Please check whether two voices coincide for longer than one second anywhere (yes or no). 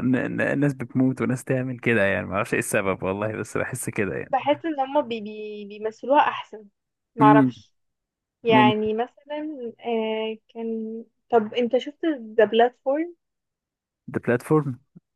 no